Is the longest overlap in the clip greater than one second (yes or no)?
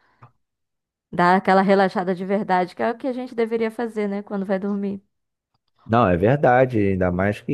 no